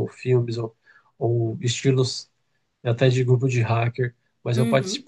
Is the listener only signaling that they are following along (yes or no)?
yes